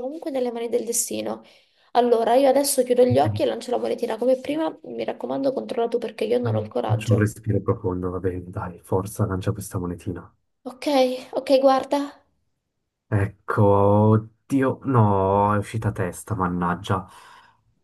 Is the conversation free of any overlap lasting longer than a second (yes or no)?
yes